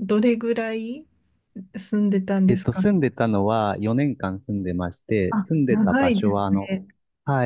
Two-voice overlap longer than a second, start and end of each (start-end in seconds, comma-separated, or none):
5.3-6.8